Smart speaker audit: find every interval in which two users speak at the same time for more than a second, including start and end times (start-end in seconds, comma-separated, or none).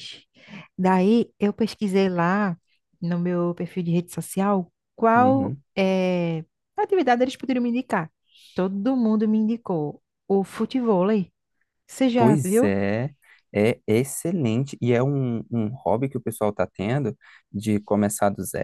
none